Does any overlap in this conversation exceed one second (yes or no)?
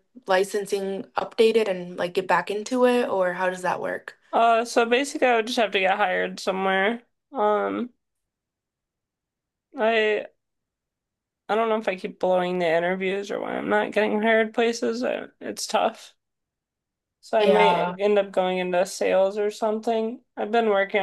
no